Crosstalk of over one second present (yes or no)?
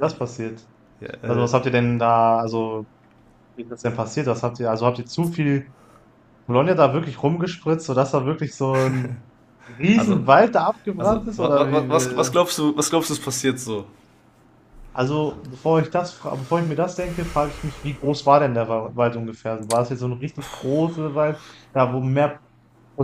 yes